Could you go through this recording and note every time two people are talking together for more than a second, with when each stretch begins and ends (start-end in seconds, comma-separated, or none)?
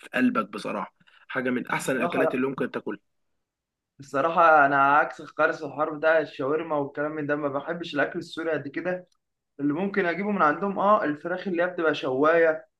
none